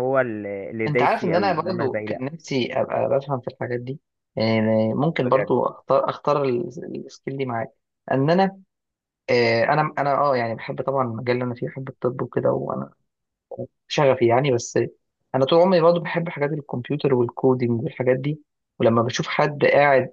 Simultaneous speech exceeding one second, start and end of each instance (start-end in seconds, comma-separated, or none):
0.9-2.2